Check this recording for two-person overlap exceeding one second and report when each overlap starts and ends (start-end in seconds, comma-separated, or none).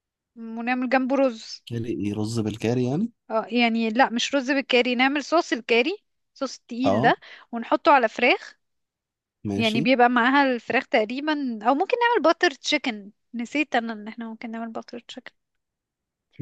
none